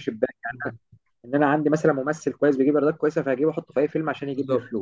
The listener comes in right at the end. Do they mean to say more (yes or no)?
yes